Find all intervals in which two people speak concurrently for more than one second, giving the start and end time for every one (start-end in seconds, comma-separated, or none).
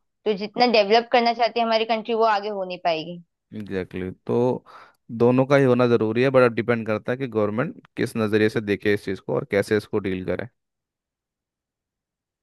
none